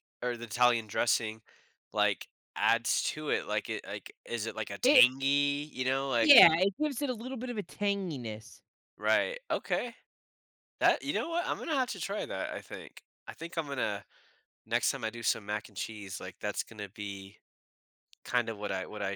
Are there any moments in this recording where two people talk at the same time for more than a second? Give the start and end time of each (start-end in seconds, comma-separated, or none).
none